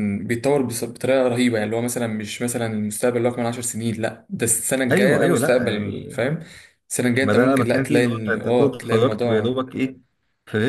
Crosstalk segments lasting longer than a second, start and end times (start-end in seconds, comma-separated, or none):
4.9-6.2, 7.2-9.6